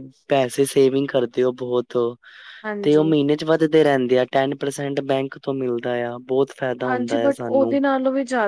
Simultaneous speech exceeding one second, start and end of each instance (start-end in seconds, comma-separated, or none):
none